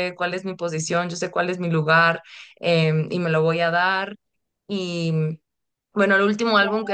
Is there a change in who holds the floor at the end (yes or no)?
no